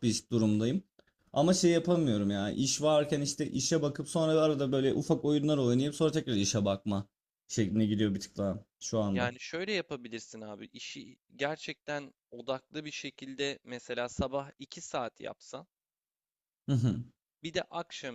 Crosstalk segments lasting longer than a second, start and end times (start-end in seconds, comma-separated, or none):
none